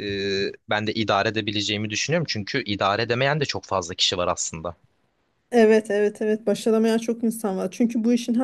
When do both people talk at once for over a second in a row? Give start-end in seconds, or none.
none